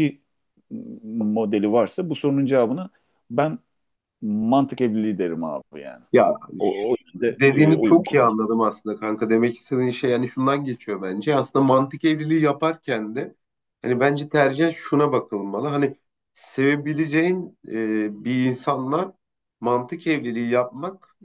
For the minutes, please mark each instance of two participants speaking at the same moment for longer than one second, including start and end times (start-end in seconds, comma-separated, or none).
7.2-8.4